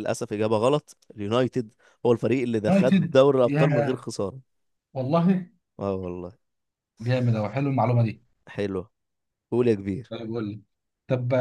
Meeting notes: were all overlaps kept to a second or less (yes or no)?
no